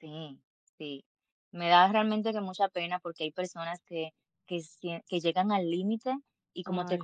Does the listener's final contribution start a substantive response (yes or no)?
no